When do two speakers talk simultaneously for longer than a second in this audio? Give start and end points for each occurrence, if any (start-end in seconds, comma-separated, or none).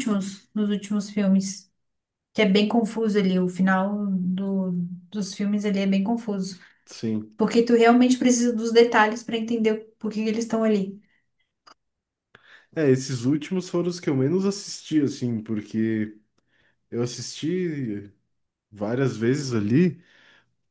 none